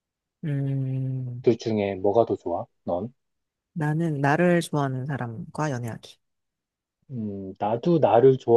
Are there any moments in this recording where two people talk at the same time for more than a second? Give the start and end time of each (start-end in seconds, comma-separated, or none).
none